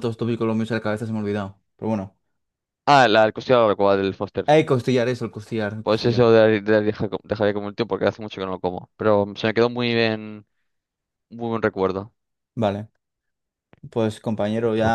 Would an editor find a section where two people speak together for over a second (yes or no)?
no